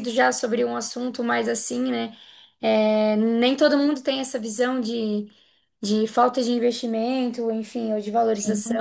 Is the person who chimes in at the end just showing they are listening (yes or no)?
yes